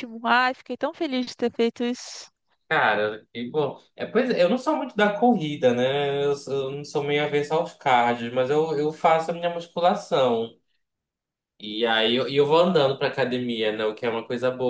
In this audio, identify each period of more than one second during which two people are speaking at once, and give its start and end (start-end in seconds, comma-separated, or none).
none